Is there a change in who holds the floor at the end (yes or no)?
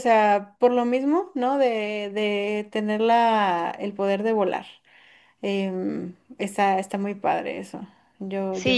yes